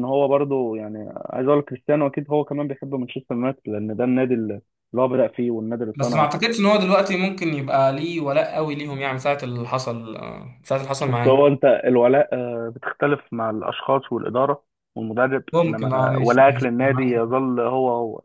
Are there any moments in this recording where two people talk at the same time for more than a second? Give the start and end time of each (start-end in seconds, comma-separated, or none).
15.5-17.4